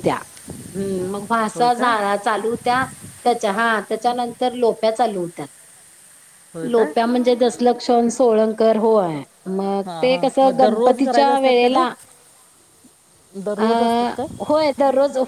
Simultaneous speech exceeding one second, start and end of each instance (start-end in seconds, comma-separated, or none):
9.8-11.8